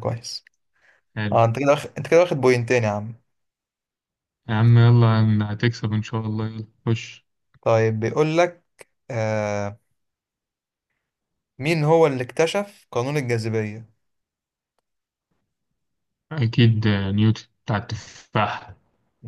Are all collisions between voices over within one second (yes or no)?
yes